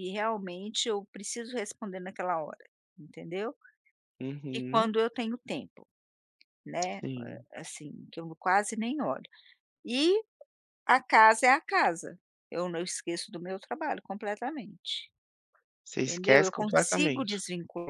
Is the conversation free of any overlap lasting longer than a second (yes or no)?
no